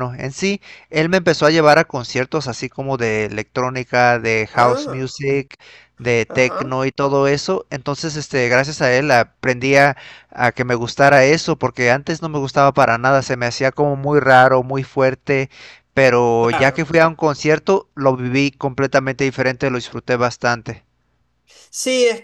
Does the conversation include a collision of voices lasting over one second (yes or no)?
no